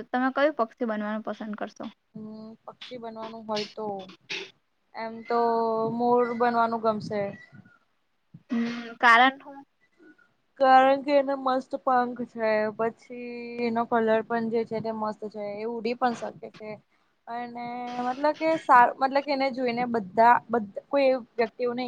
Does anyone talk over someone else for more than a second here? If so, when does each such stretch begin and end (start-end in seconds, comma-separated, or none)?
none